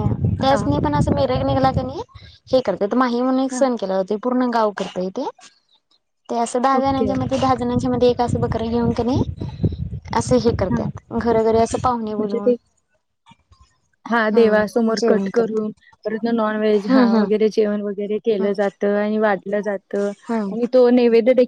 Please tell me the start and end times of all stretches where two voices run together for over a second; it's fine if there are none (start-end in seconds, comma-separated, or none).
14.3-15.7